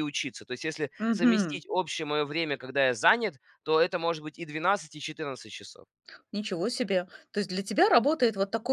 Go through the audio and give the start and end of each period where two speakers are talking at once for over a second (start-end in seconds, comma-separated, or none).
none